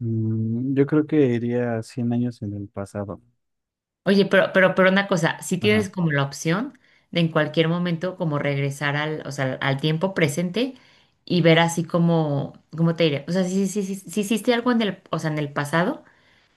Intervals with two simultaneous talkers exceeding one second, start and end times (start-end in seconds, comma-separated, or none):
none